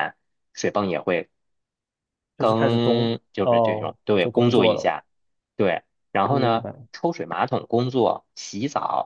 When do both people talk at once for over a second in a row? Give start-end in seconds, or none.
2.4-4.9